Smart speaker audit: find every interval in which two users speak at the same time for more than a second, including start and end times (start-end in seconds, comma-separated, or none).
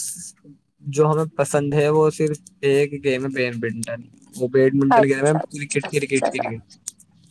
4.9-6.5